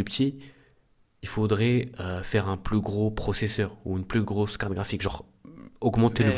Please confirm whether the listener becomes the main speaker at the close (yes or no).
yes